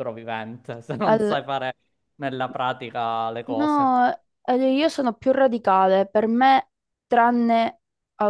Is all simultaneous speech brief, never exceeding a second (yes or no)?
yes